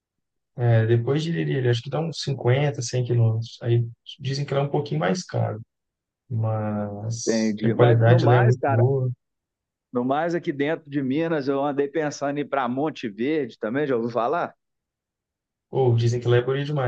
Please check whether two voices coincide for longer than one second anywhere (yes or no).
yes